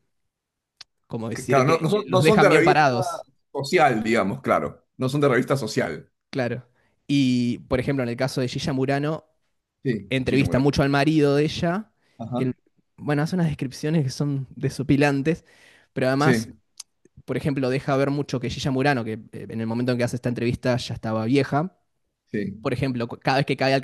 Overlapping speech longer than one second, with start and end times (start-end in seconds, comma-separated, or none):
1.3-3.0